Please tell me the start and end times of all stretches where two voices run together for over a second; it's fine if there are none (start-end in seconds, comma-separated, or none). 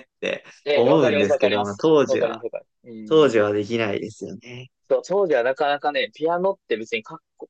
0.6-2.4